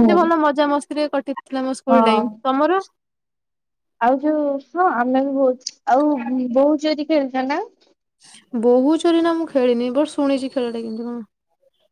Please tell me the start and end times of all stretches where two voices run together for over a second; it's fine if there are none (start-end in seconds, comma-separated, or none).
none